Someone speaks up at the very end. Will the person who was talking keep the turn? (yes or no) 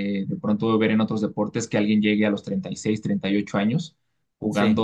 yes